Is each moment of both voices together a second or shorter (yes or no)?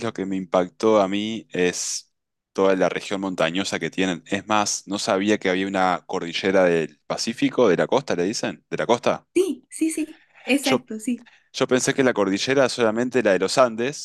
yes